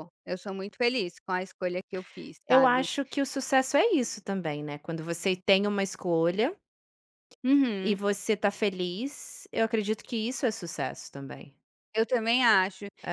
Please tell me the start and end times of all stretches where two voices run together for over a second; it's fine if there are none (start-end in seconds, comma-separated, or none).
none